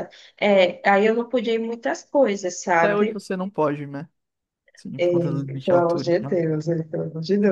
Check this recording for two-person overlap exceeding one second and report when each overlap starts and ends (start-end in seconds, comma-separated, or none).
5.0-6.4